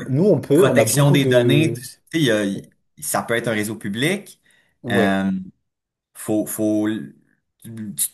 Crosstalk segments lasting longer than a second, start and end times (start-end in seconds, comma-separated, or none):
0.5-1.8